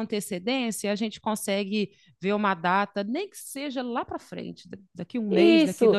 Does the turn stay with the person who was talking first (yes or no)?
no